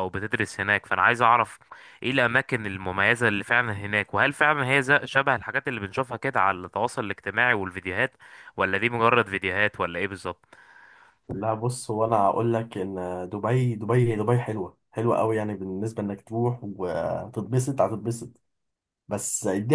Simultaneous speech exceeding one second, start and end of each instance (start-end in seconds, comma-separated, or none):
none